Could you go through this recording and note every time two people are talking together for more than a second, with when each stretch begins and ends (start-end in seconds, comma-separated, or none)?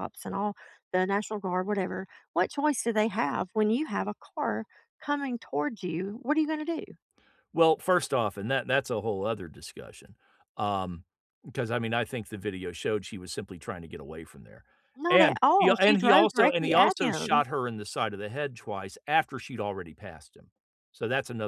15.1-17.5